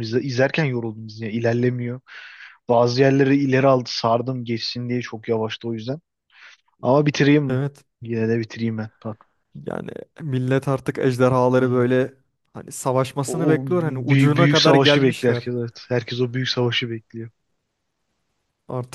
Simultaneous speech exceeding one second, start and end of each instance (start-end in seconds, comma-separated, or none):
13.3-15.5